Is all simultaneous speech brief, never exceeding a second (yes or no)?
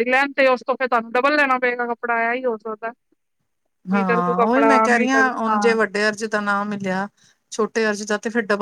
no